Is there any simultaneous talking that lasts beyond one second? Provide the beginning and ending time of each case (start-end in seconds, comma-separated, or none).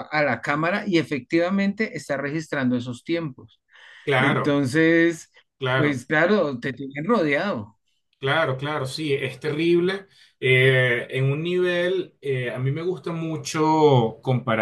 none